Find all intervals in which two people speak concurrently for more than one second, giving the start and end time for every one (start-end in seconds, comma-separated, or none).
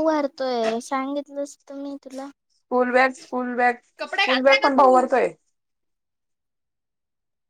none